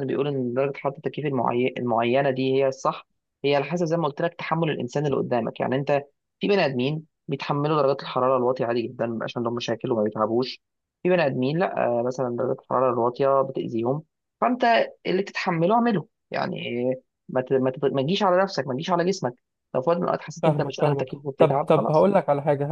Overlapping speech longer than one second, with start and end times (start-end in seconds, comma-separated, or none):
20.4-22.1